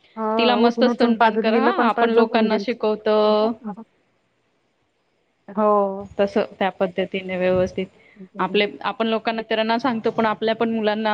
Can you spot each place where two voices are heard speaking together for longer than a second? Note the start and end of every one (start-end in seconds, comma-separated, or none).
0.6-2.8